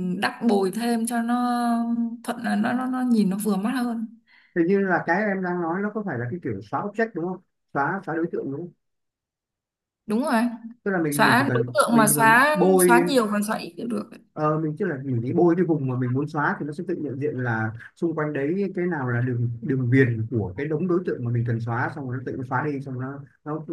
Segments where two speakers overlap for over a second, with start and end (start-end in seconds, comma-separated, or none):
11.1-13.1